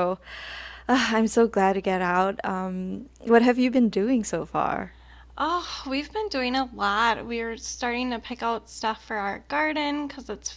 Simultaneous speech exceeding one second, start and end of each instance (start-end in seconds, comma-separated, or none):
none